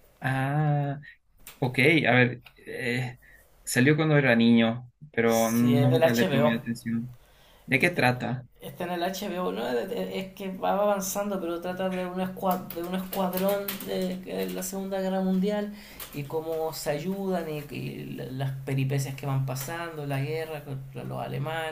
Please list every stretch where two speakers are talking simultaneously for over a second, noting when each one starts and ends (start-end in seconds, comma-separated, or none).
5.2-6.5